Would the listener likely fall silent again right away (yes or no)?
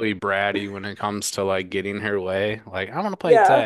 no